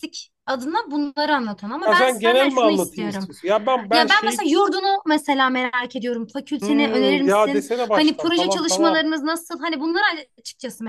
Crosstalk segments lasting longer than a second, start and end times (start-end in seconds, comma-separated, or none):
1.8-3.3, 6.6-9.1